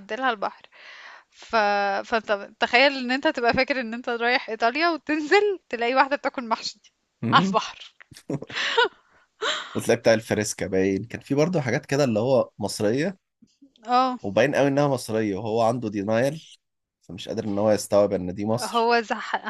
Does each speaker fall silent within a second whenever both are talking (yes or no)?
yes